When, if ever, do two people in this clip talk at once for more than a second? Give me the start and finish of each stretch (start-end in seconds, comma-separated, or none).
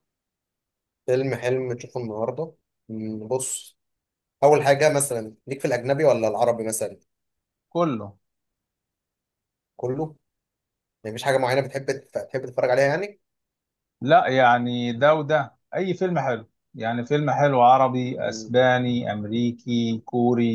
none